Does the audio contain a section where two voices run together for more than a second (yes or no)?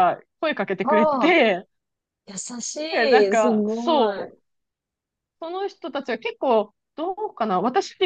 yes